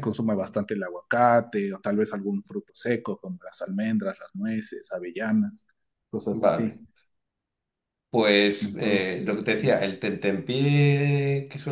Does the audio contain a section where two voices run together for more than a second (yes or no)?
yes